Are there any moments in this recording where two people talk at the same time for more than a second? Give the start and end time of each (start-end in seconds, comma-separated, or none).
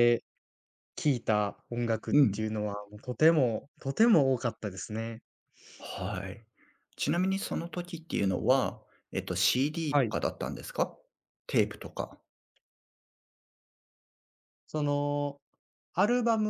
none